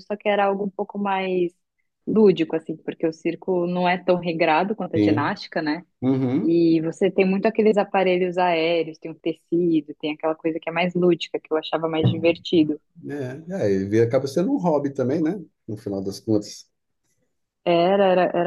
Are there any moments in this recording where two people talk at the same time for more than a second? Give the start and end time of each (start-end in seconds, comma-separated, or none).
none